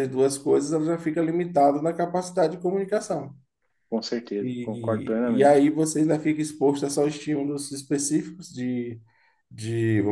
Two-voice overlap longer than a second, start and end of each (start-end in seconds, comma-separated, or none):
4.4-5.7